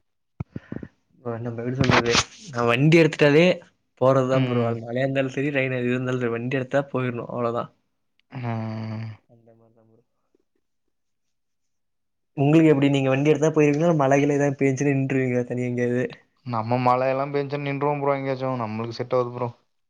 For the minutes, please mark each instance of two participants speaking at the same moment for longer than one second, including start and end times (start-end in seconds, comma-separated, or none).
none